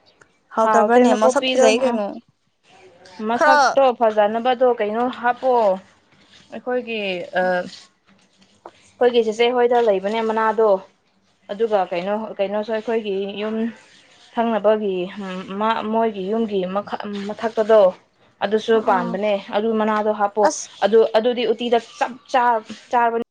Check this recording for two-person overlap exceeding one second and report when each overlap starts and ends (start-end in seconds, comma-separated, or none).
0.6-2.0